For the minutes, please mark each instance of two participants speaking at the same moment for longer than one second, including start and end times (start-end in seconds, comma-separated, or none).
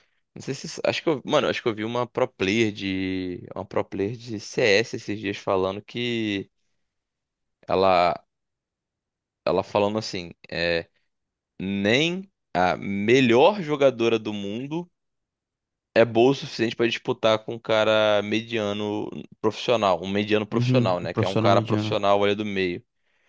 20.5-22.0